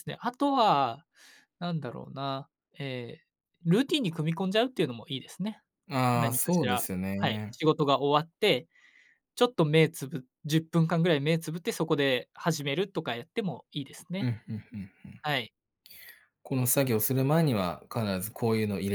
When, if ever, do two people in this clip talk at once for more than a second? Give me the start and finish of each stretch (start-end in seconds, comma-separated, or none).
6.1-7.6